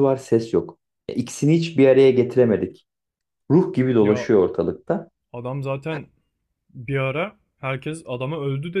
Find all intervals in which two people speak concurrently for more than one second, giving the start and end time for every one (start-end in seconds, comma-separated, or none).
none